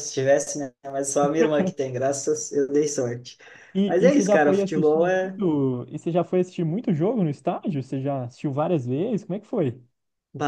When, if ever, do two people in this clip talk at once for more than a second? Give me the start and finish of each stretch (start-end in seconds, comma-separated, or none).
3.9-5.4